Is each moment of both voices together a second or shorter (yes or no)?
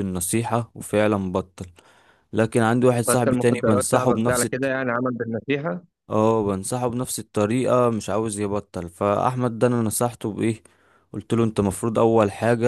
no